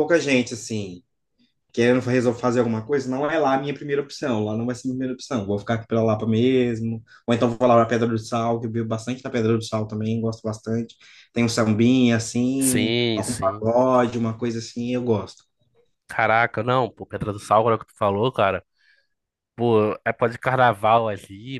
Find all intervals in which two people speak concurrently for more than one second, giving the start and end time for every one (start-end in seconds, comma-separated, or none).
12.6-13.8